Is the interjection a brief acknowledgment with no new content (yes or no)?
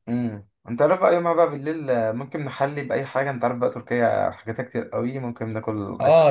no